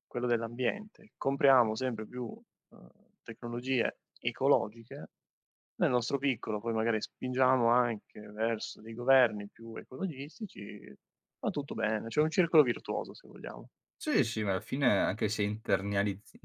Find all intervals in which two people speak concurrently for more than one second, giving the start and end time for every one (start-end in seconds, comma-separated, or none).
none